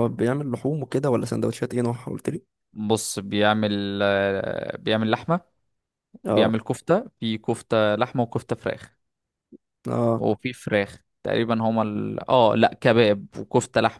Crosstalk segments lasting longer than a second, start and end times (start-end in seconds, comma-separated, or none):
none